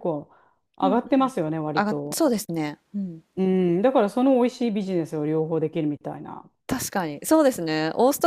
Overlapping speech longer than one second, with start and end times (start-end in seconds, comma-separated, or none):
none